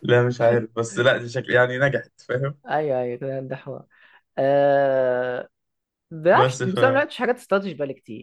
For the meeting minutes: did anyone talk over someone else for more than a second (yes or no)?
no